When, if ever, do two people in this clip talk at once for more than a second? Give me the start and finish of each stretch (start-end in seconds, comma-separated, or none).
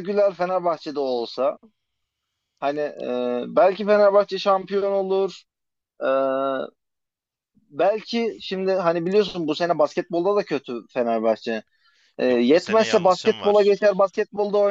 12.3-13.8